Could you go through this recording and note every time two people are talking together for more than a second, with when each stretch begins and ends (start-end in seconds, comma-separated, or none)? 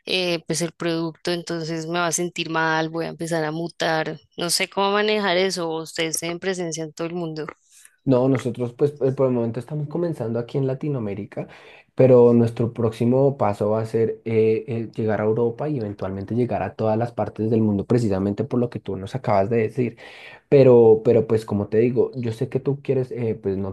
none